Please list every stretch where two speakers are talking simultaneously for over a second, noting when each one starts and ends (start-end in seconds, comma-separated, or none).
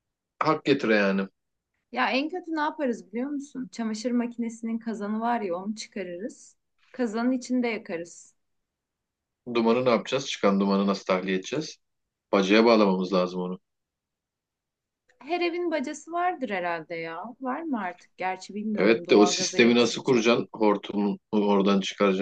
18.7-20.3